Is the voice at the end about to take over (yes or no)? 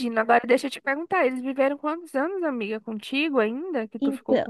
yes